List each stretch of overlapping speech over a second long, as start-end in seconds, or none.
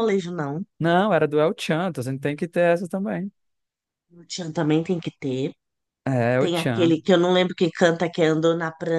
none